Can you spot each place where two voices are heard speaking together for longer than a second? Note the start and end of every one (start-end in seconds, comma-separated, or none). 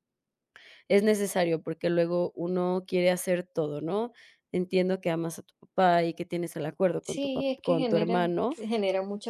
7.0-8.6